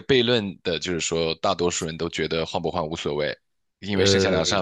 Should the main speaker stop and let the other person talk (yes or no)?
no